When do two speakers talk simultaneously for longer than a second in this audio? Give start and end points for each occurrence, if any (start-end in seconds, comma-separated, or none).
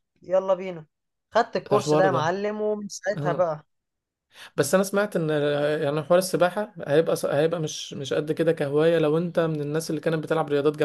none